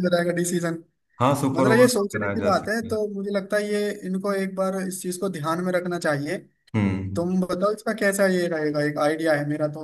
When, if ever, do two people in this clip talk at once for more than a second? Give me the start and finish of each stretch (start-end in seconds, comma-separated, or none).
1.5-3.0